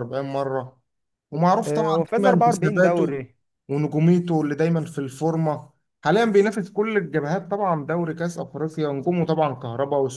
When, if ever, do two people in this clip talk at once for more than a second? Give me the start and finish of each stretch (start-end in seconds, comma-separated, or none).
1.6-3.2